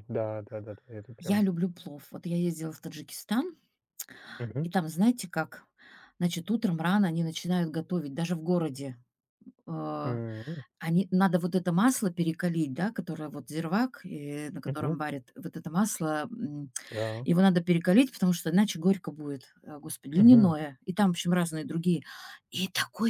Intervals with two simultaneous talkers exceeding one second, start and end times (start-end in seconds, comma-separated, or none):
none